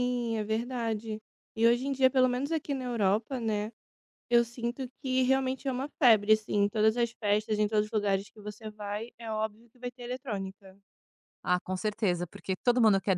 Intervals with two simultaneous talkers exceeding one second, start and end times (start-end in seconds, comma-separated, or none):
none